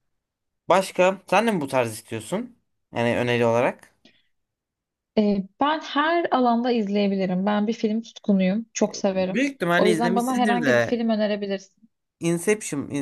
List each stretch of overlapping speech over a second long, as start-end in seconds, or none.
9.1-11.0